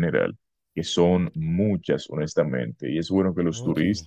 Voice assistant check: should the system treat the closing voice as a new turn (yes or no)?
no